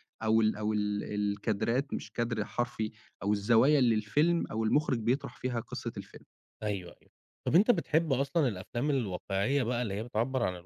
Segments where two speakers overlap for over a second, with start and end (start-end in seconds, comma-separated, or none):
none